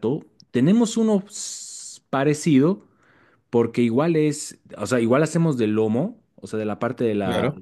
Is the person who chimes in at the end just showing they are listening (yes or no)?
yes